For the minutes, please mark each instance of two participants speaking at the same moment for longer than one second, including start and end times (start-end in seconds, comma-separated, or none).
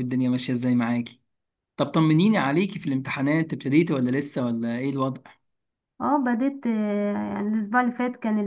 none